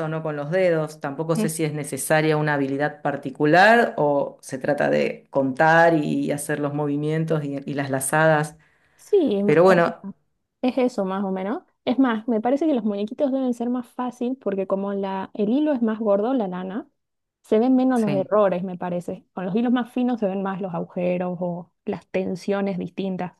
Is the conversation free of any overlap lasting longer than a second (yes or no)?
yes